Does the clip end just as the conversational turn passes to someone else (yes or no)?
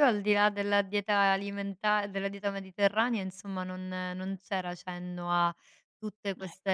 no